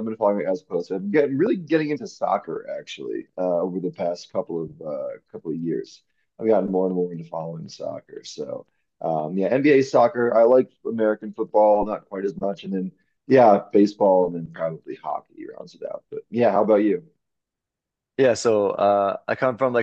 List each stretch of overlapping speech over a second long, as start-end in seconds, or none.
none